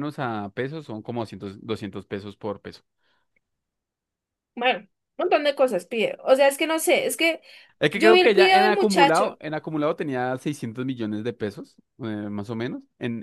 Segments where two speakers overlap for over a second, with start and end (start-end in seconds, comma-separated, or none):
7.9-9.4